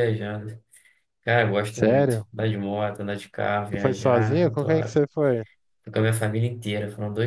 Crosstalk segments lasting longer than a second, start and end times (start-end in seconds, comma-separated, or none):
3.7-5.0